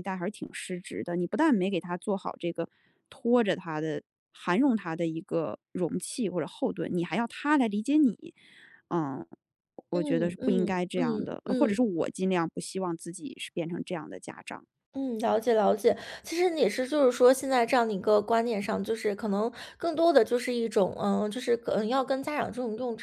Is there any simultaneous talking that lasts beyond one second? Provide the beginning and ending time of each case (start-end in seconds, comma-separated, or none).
9.9-11.8